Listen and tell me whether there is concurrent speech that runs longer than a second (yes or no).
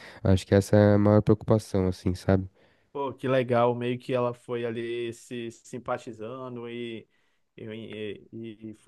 no